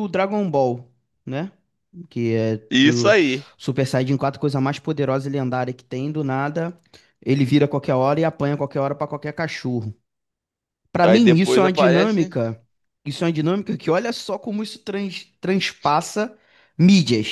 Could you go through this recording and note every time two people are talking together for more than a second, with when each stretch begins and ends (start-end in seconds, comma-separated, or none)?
11.0-12.3